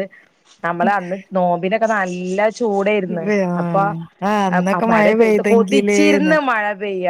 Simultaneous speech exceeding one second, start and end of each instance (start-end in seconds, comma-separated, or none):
4.6-6.3